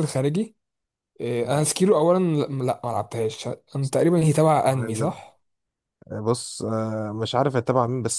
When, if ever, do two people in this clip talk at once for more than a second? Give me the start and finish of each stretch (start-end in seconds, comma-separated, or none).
none